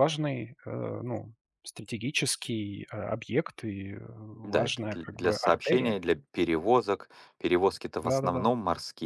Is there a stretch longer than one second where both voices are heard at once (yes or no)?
yes